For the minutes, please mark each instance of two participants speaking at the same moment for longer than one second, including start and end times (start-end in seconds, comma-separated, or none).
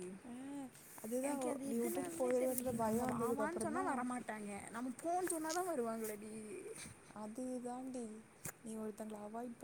1.3-4.0